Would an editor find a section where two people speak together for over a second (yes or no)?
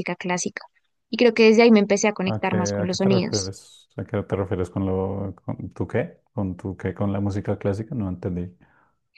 yes